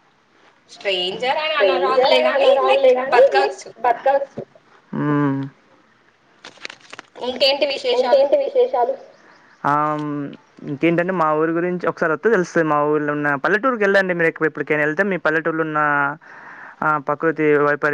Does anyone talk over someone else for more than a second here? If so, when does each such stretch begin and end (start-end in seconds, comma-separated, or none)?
1.5-3.7